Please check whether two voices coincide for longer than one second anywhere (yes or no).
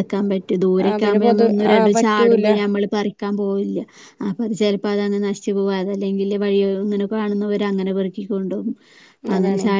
yes